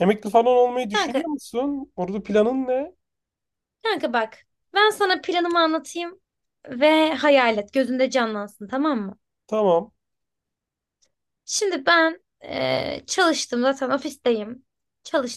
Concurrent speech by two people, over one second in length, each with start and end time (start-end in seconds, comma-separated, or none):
none